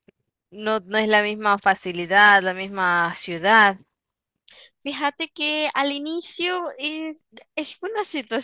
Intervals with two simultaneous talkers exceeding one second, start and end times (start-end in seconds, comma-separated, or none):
none